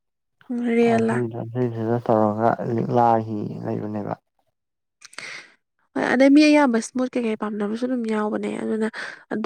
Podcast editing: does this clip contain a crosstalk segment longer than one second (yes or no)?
no